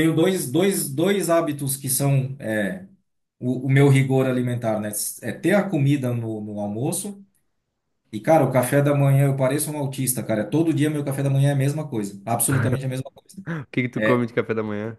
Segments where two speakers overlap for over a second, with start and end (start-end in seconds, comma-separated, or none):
none